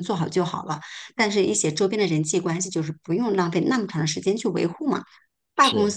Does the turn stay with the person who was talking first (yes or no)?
yes